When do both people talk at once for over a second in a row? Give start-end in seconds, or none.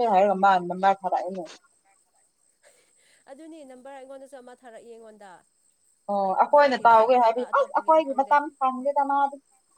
6.5-8.3